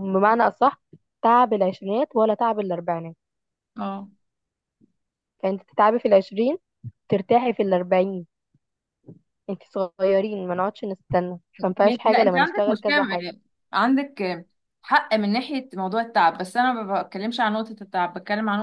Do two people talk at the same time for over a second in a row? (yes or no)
yes